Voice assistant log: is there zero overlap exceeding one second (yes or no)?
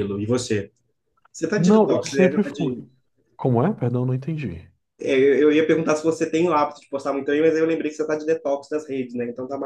no